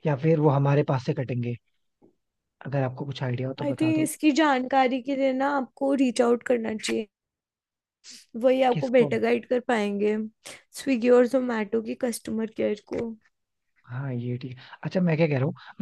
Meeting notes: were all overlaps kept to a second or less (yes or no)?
yes